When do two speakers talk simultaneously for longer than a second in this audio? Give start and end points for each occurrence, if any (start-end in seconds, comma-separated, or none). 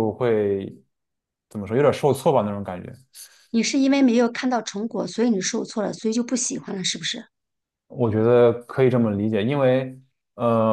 none